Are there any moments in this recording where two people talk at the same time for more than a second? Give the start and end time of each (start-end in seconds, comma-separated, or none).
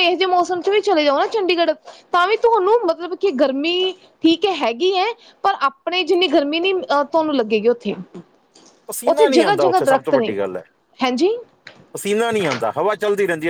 9.1-10.4